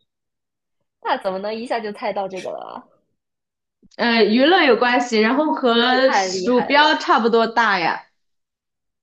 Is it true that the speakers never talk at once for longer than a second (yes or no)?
no